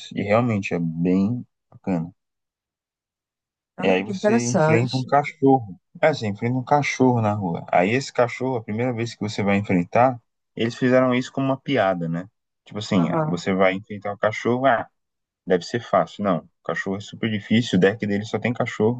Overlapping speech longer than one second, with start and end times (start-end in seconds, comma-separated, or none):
3.8-5.1